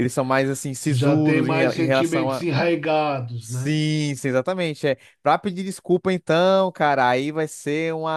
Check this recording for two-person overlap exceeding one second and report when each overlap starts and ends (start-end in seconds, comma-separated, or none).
0.9-2.4